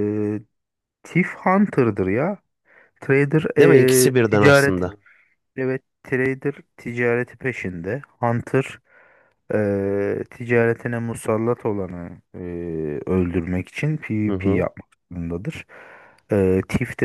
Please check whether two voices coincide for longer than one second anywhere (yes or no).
yes